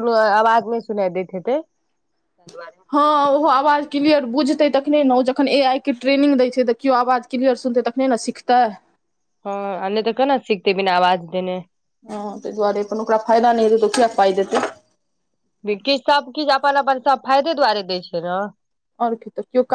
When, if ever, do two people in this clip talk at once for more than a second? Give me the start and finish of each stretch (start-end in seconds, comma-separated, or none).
none